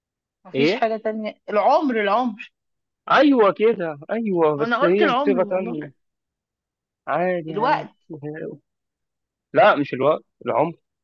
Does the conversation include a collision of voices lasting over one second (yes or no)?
yes